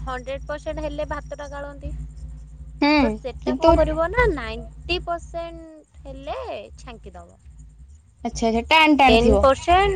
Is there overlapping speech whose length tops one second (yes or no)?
no